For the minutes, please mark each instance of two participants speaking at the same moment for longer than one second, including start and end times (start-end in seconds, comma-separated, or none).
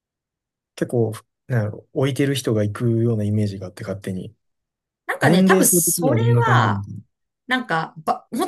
5.2-6.8